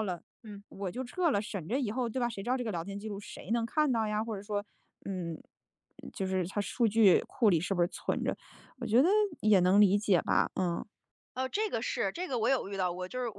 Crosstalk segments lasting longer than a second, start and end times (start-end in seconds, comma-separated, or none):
none